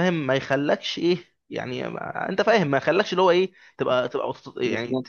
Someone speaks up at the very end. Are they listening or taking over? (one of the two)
listening